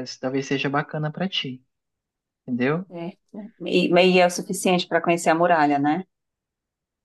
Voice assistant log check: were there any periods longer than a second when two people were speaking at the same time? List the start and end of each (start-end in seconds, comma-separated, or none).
none